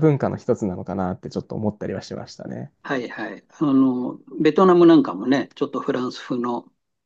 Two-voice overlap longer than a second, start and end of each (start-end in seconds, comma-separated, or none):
none